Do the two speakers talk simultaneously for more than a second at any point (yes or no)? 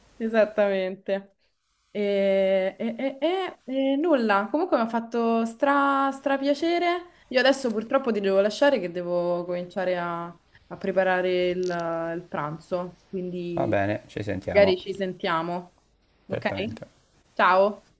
no